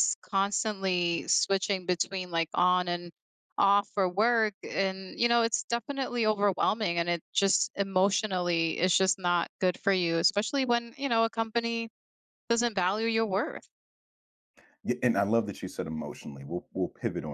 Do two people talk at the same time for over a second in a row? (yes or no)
no